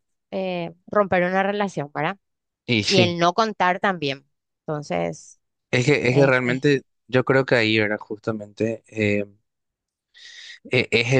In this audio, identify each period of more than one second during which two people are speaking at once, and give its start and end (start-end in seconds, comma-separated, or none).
none